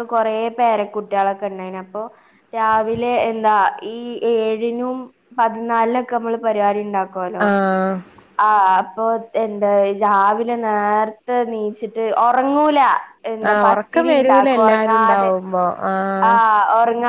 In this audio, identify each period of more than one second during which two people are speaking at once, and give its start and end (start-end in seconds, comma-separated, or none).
13.5-15.3